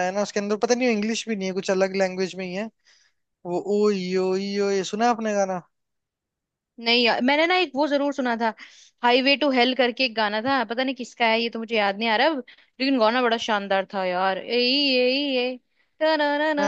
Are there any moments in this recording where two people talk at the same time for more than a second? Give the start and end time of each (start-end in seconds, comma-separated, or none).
none